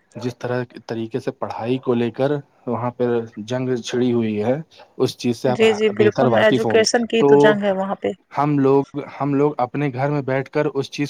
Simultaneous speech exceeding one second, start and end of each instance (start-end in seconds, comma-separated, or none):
5.6-7.3